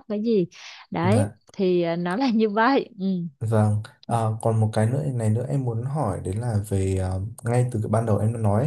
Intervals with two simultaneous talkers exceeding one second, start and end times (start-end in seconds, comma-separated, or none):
none